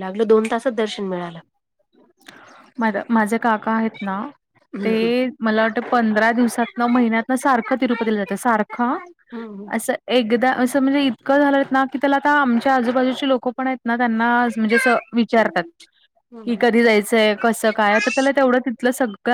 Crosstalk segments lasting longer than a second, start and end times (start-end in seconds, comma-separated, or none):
none